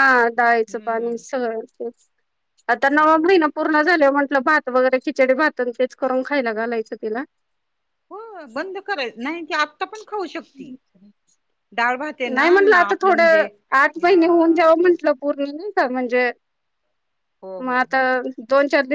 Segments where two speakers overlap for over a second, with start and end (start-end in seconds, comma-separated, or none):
12.3-14.9